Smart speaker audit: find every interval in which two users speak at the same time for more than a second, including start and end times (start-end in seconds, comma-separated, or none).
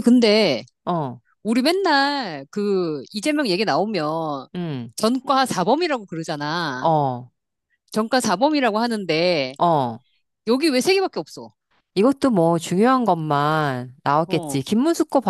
none